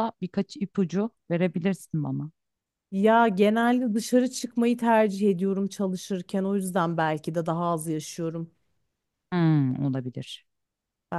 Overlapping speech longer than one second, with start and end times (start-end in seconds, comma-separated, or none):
none